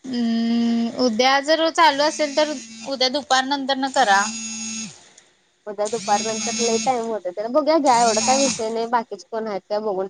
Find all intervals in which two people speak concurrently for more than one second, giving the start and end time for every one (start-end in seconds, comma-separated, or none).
none